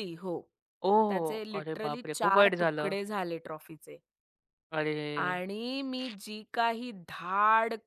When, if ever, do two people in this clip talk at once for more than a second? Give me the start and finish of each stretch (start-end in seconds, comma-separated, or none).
1.1-2.9